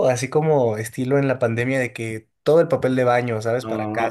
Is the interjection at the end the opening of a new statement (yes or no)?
yes